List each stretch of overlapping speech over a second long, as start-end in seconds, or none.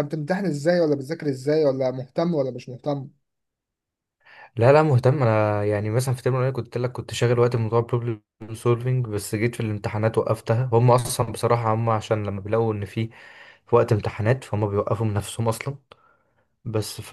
none